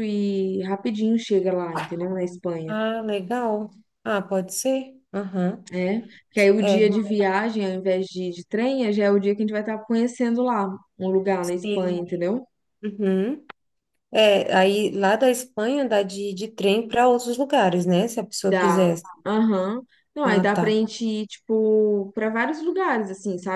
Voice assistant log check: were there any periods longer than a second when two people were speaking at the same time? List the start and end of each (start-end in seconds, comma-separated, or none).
none